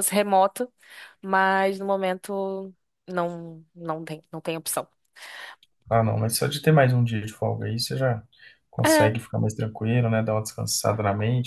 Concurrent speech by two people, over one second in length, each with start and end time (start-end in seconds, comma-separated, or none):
none